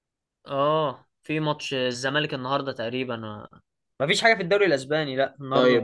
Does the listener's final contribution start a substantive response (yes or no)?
yes